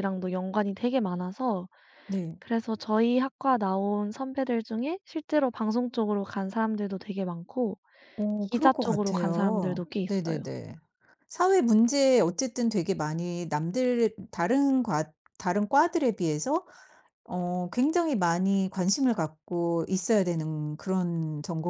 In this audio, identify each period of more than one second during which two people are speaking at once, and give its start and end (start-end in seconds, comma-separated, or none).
8.5-10.4